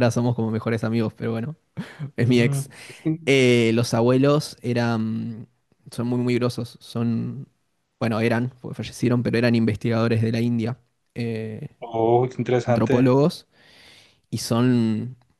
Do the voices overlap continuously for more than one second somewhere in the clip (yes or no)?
no